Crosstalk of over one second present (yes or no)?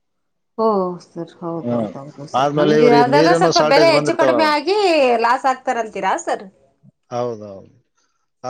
yes